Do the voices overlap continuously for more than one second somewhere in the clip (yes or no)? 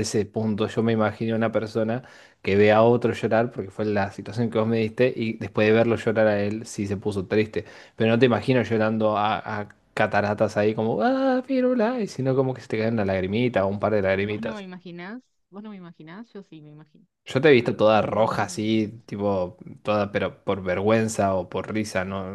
yes